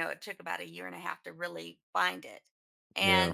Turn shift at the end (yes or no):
no